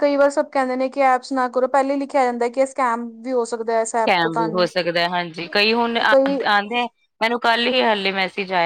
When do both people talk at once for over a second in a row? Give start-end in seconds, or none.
none